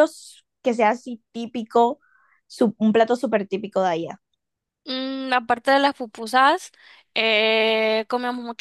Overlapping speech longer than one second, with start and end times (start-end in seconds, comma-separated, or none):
none